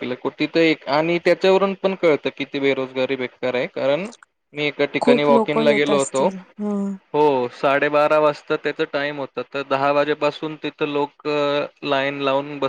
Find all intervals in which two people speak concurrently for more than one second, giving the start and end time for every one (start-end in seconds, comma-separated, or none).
5.0-6.2